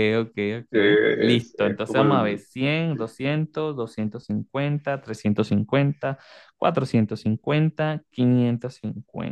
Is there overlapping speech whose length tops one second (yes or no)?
yes